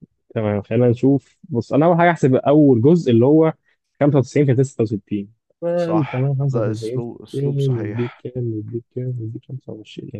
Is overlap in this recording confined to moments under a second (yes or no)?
no